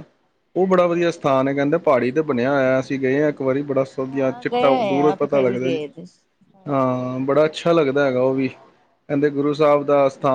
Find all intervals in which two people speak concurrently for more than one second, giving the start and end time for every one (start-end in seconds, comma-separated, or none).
4.1-5.8